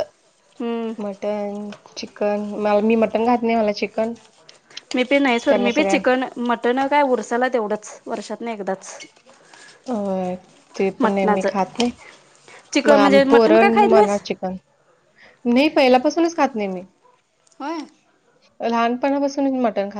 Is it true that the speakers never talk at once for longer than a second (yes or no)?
no